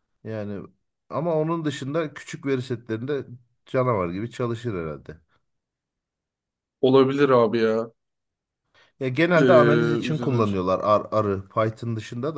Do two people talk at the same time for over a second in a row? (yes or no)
no